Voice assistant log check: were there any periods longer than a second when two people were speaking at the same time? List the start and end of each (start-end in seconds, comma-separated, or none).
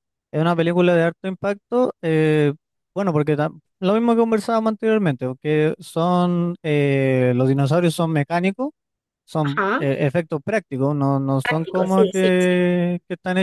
11.4-12.6